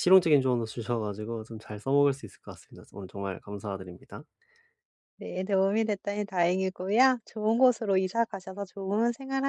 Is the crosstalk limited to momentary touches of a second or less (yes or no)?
yes